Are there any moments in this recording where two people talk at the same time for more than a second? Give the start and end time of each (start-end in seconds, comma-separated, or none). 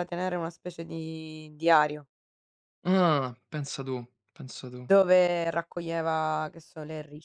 none